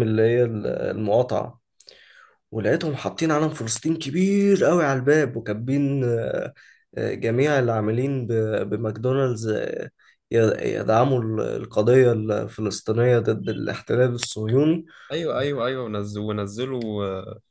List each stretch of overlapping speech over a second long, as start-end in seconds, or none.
none